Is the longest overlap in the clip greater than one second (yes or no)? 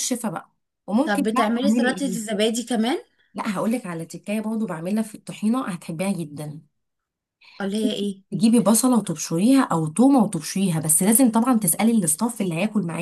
yes